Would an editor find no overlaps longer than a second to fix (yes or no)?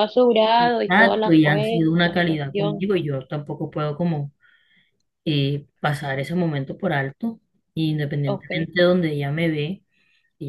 no